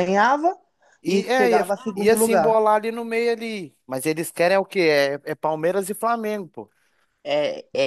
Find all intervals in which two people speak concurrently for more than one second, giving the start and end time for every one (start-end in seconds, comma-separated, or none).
1.1-2.6